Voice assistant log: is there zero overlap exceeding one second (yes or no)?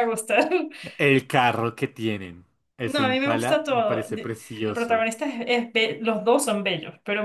no